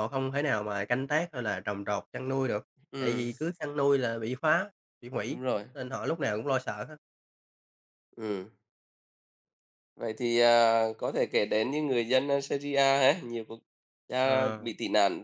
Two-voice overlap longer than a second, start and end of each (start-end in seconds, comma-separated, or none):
none